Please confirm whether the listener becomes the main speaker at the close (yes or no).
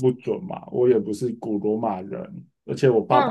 no